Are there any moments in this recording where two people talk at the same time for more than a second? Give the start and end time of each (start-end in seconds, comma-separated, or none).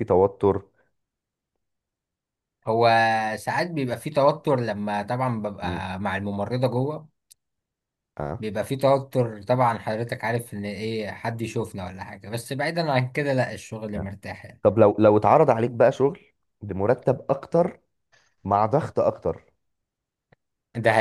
none